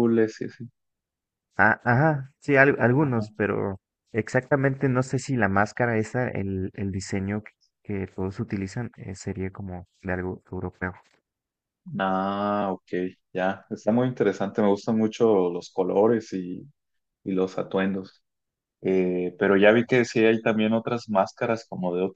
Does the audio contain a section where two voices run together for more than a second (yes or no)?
no